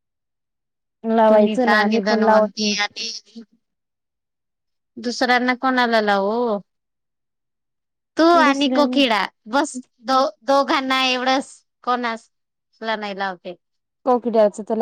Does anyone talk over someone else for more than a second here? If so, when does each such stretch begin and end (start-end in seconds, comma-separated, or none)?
1.3-2.9